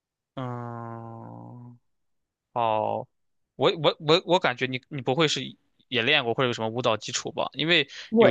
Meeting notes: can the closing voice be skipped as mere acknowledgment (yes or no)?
no